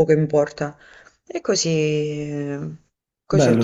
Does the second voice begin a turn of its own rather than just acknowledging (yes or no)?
yes